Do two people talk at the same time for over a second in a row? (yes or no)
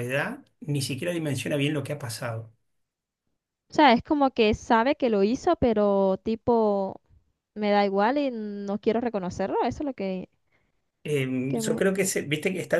no